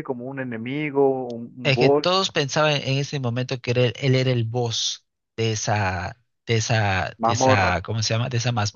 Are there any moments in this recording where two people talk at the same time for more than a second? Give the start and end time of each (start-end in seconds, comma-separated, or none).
none